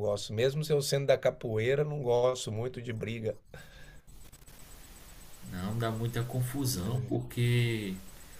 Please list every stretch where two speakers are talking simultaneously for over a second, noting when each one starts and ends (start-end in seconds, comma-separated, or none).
none